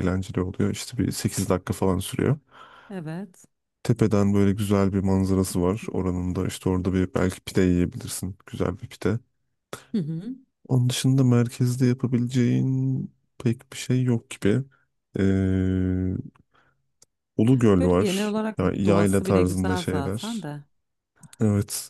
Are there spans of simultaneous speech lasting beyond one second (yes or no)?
yes